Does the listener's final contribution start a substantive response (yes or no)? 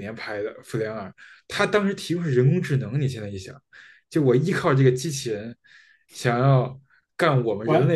yes